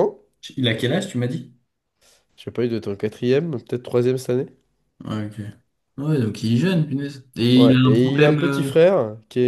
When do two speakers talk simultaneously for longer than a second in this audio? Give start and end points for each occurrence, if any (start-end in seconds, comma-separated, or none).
7.5-8.9